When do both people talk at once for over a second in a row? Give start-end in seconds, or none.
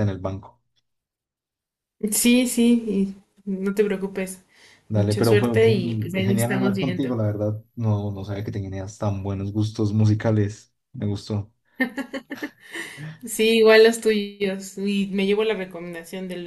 4.9-7.1